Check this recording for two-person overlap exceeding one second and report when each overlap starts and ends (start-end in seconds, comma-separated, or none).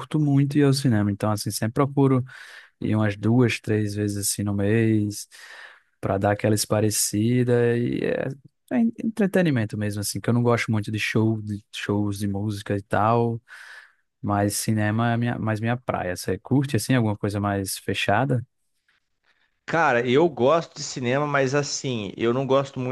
none